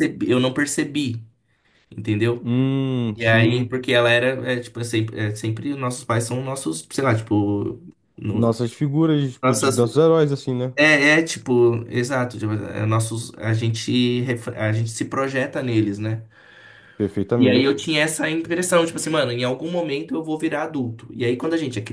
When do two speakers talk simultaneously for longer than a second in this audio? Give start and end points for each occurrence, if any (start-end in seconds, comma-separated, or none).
none